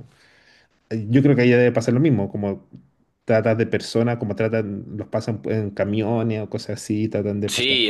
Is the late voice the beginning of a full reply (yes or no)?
yes